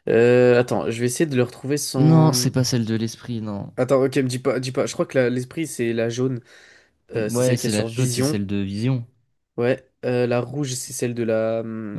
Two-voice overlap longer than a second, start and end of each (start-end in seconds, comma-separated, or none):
7.2-8.4